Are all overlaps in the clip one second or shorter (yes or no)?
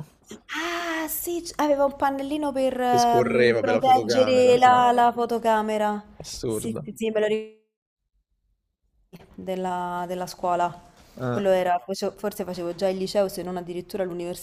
no